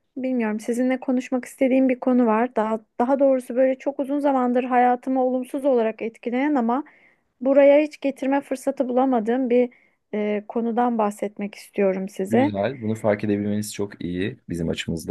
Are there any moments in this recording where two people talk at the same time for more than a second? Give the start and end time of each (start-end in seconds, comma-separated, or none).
none